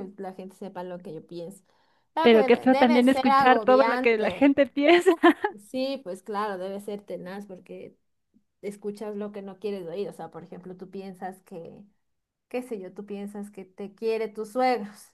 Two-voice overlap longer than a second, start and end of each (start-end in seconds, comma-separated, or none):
2.2-4.5